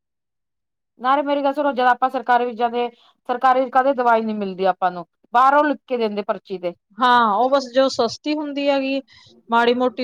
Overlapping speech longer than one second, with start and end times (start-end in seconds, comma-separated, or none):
none